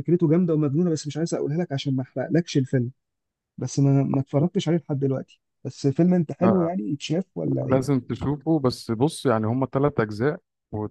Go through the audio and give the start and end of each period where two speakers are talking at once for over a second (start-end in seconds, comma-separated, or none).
none